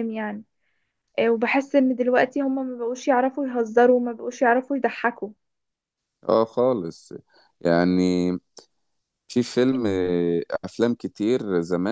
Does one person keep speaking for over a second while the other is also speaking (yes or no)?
no